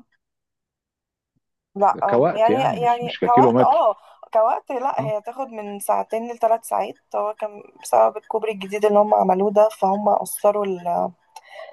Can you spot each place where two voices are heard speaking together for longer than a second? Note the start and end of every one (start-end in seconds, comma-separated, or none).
2.1-4.0